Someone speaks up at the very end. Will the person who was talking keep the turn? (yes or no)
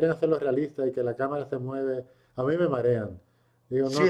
no